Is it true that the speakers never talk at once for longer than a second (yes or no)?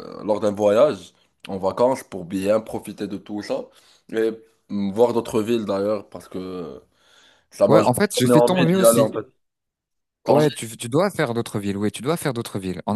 no